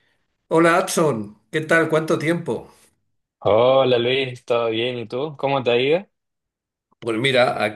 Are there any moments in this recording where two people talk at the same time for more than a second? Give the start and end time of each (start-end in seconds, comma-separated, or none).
none